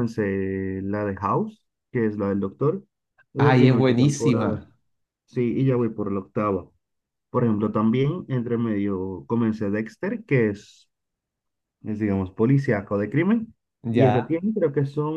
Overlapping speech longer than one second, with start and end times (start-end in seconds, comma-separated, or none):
3.4-4.7